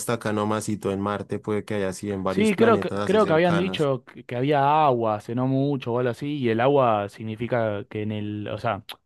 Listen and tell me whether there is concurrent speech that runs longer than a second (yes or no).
yes